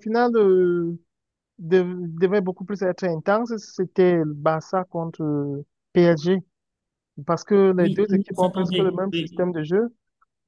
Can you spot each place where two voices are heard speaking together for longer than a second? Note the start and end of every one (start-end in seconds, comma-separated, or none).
7.8-9.5